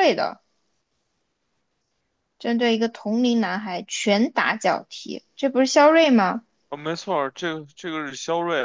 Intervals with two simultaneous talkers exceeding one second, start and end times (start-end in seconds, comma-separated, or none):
none